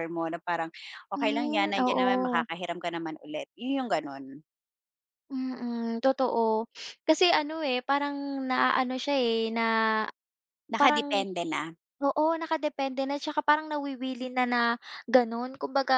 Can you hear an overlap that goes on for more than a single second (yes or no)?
yes